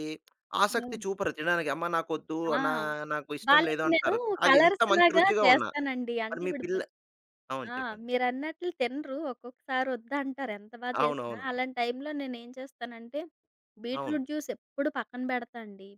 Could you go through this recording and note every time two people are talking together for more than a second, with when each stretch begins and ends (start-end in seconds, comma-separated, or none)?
3.5-5.7